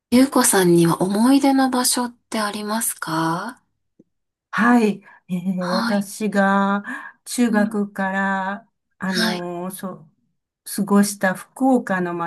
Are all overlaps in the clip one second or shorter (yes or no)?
yes